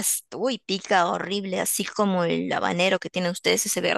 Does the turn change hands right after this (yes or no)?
yes